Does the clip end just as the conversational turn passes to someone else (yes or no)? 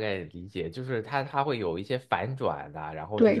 yes